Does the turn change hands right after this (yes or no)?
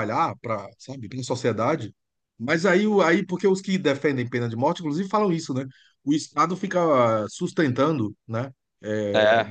no